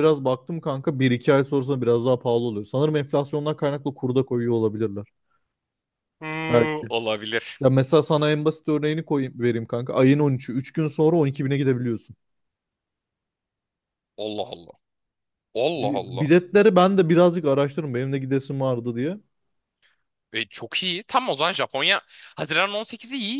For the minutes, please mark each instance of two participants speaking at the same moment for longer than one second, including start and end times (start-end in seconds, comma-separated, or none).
none